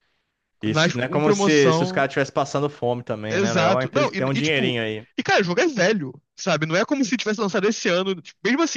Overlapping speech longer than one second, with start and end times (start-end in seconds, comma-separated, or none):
0.7-2.1, 3.3-4.8